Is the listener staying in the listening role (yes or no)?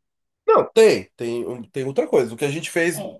yes